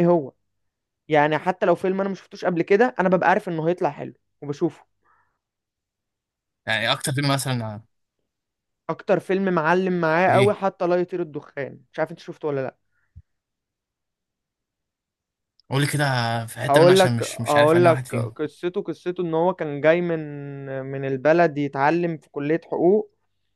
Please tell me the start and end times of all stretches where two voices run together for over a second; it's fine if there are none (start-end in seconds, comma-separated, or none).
16.7-18.3